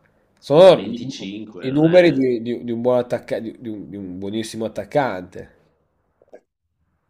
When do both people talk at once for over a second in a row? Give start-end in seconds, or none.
0.6-2.2